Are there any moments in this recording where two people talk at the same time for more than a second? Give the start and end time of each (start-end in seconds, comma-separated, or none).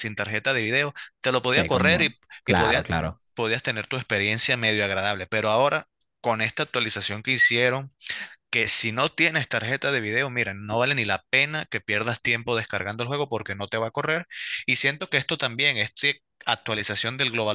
1.5-2.9